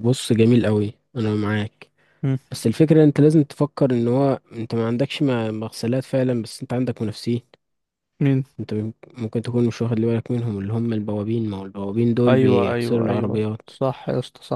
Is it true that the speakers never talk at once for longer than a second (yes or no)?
no